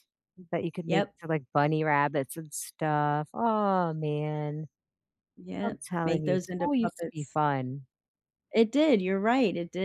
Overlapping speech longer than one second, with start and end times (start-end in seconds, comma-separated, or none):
5.6-7.4